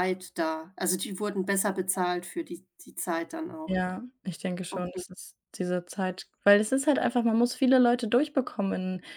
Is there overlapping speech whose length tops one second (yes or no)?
no